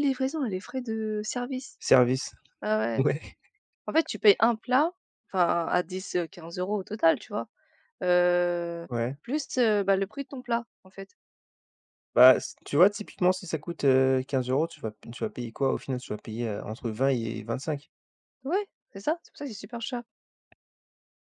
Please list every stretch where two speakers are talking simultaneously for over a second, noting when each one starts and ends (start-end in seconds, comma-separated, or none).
none